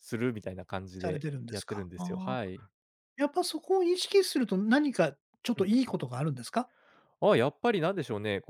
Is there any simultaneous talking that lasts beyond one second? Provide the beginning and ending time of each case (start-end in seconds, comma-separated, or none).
1.0-2.5